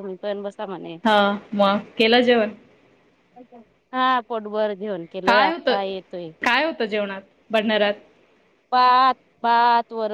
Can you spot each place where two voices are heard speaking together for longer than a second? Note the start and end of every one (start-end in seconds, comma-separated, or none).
none